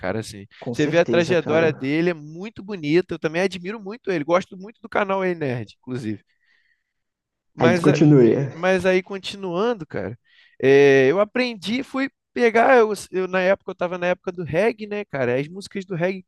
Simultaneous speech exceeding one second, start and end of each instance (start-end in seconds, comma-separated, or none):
0.6-1.9